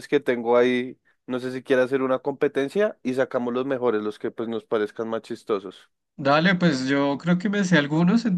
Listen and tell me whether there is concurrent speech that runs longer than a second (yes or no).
no